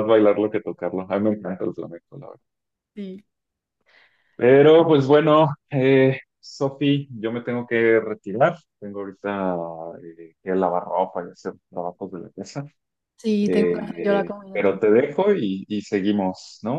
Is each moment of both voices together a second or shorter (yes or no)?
no